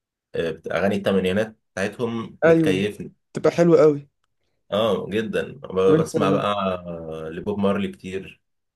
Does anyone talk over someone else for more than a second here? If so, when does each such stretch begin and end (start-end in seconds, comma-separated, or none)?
none